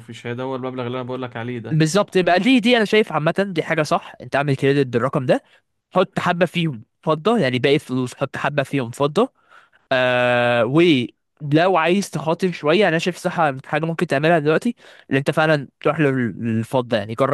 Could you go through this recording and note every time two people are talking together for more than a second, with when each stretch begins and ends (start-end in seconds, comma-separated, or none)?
none